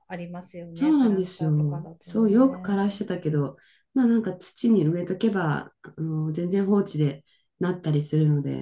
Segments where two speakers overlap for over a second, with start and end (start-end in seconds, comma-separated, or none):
0.7-3.0